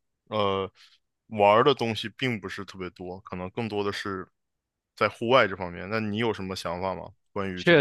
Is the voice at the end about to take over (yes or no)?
yes